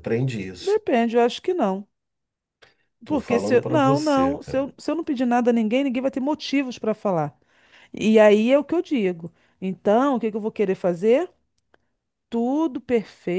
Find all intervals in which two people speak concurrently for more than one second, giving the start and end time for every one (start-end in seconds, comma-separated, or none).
3.1-4.7